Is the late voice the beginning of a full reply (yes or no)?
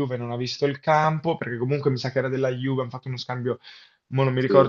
no